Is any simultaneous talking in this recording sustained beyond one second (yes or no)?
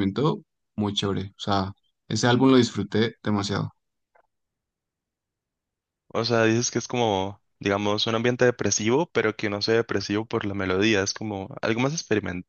no